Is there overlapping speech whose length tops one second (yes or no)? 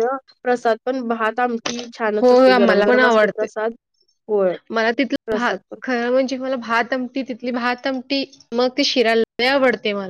yes